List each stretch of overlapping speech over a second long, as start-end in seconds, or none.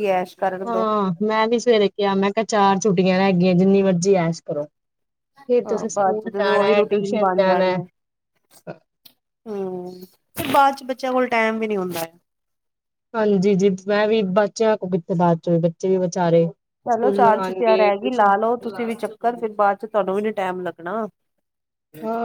5.7-7.2, 16.9-18.3